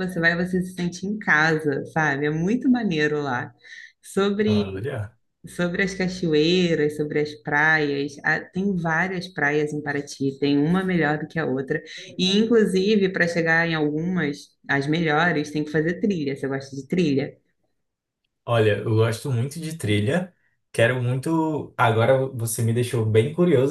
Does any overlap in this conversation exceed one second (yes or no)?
no